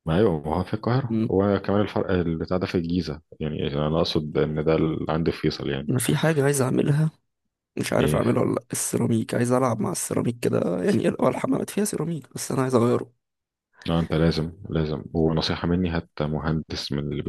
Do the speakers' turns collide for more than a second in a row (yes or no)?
no